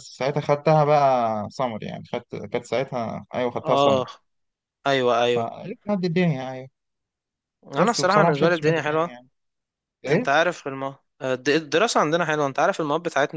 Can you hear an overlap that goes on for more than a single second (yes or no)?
yes